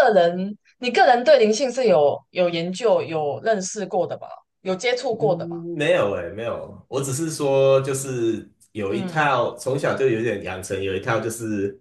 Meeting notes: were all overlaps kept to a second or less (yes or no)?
yes